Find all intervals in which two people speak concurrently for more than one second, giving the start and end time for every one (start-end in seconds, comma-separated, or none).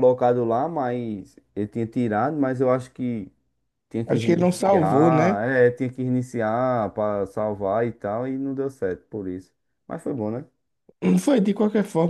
4.1-5.4